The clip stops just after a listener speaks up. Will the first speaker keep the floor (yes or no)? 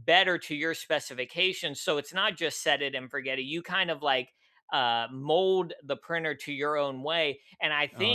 no